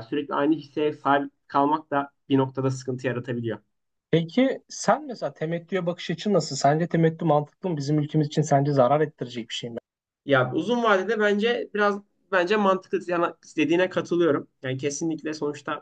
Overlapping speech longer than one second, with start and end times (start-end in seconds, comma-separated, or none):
none